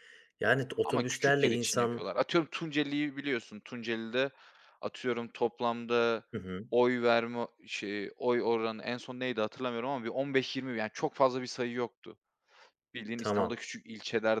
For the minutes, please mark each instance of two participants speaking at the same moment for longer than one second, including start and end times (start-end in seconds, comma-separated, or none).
0.8-2.0